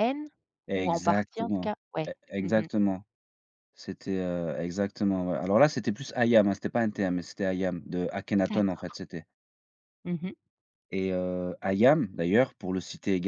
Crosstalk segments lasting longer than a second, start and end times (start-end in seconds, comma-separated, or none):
0.8-2.7